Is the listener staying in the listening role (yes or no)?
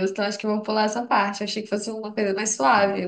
yes